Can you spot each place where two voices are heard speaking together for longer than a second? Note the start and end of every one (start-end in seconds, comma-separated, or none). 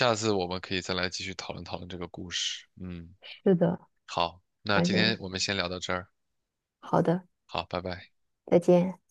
none